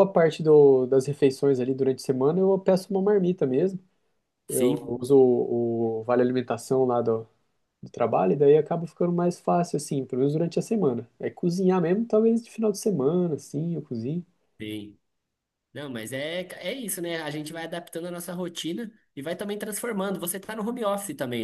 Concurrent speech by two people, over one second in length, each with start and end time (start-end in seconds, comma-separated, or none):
none